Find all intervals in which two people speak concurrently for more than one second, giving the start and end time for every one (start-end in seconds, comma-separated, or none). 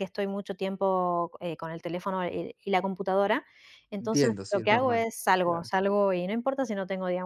4.0-5.7